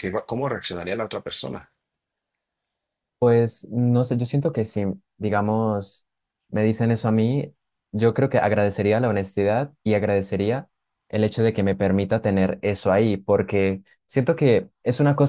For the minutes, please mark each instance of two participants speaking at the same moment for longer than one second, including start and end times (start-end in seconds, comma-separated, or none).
none